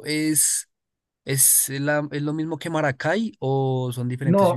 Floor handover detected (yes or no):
yes